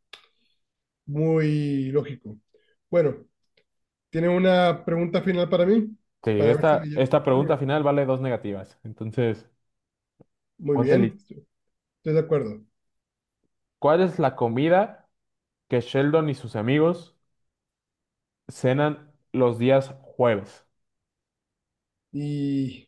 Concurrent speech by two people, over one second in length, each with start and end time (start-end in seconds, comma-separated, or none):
6.4-7.6